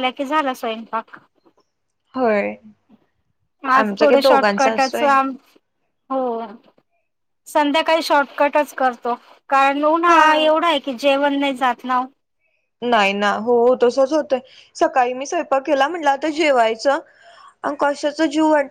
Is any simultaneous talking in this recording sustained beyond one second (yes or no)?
yes